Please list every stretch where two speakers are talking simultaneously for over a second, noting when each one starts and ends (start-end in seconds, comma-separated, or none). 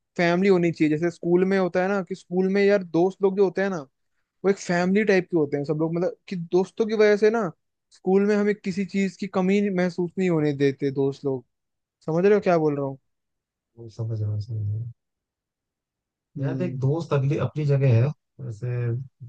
none